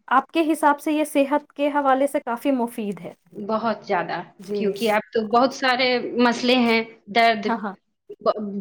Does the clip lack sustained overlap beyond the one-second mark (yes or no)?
yes